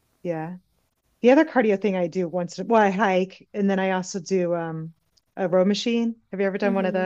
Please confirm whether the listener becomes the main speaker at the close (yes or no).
yes